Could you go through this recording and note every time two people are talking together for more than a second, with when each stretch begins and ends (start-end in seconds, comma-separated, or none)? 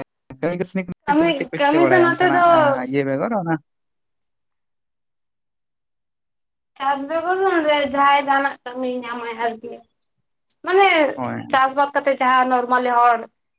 1.1-2.5